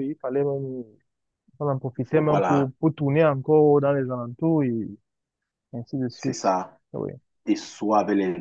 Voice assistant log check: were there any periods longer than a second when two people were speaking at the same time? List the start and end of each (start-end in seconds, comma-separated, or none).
none